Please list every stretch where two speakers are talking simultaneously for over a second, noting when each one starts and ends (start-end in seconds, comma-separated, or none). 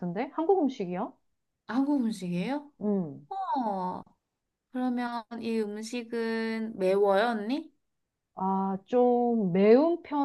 none